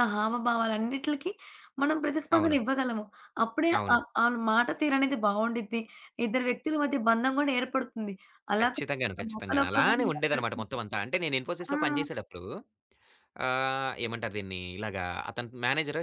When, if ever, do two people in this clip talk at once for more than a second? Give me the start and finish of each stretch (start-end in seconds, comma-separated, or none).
8.6-10.7